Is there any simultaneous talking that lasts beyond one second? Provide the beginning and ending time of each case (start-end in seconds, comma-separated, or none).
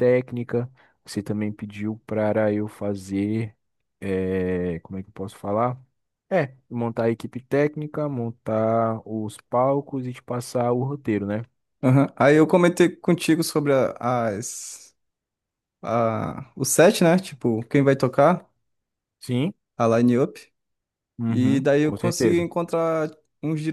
21.3-22.5